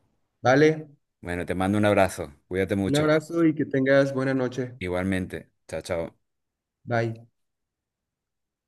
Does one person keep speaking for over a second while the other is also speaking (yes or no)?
no